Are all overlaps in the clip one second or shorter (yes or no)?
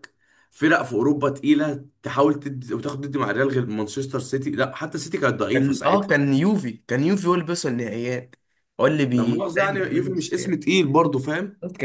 no